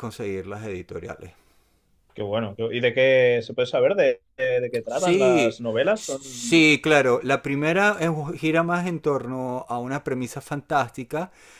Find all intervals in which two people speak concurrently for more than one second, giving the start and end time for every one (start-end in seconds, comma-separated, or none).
4.9-6.6